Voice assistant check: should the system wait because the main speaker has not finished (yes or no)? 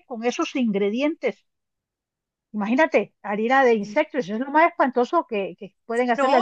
no